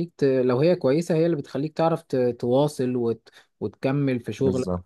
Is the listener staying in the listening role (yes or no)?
yes